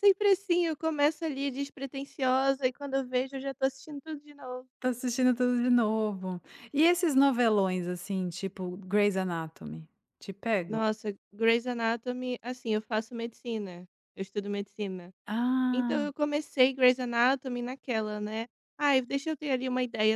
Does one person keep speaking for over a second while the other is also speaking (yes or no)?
no